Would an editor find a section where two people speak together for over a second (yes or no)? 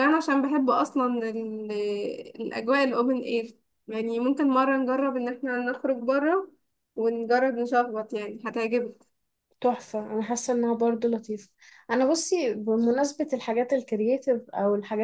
no